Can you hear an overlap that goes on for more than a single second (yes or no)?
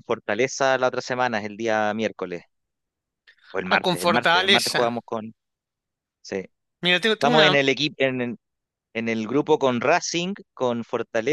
yes